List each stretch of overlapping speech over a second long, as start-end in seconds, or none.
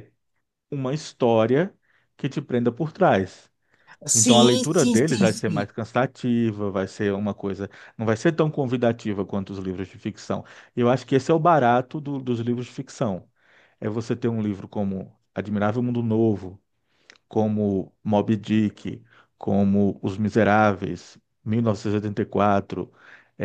4.1-5.7